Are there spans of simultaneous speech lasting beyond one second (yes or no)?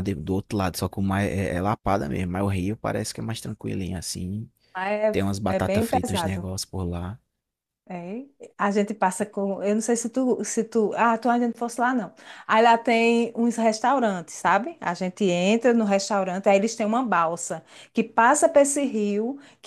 yes